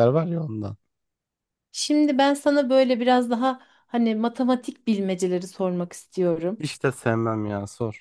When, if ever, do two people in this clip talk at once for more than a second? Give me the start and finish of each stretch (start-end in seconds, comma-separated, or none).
none